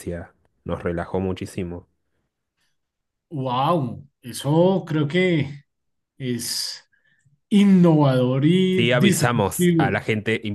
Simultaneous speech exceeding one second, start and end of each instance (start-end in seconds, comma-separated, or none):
8.7-10.0